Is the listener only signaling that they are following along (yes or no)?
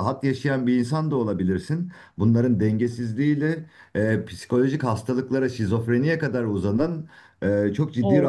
yes